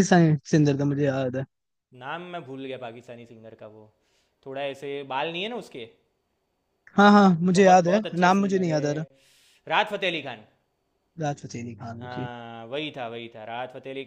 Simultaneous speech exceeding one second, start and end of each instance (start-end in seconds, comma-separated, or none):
7.5-9.0